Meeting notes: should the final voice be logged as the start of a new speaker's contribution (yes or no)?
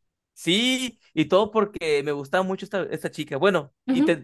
yes